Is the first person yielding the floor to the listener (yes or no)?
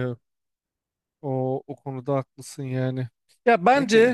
no